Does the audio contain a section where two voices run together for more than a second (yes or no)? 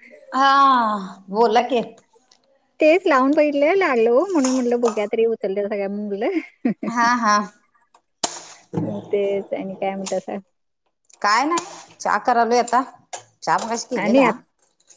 no